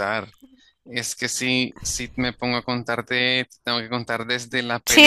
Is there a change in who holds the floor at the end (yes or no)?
yes